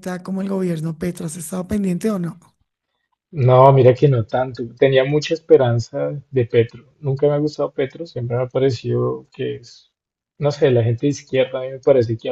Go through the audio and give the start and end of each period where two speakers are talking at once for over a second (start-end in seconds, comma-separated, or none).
none